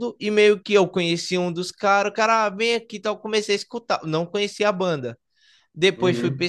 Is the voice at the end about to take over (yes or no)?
no